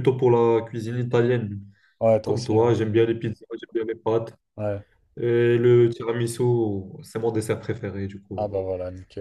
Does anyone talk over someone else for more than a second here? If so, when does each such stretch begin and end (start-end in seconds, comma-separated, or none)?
none